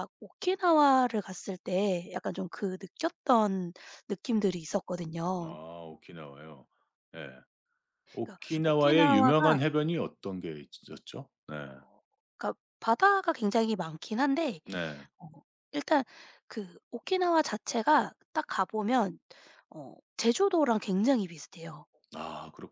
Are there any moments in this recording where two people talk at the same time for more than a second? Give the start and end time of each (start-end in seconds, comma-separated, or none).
8.1-9.6